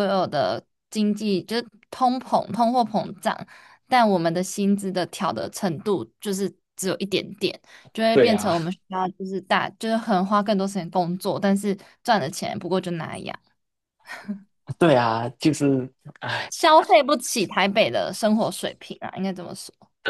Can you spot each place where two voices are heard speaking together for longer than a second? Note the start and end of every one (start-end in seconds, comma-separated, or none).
none